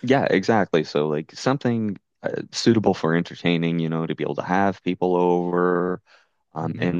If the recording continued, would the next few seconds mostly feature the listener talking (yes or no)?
no